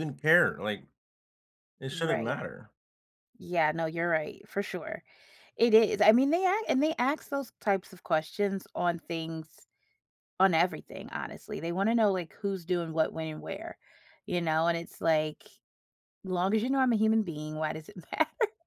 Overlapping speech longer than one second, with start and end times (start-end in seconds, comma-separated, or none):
none